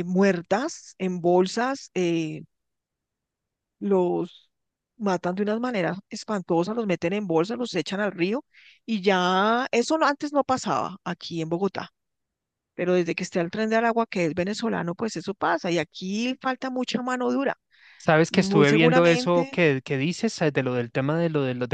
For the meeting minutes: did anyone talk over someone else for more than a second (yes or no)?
yes